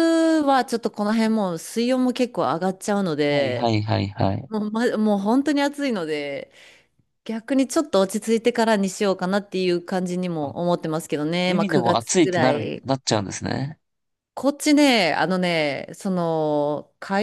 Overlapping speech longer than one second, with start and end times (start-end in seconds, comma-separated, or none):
11.5-12.8